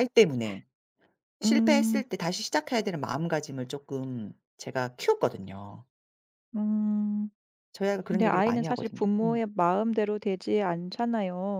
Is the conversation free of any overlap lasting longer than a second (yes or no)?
no